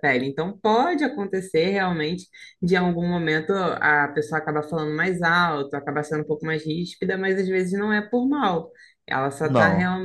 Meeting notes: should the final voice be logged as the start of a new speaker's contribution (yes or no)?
no